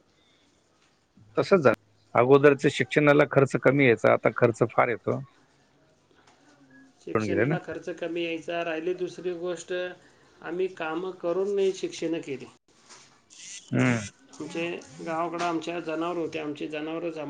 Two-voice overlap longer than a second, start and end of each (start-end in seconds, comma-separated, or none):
none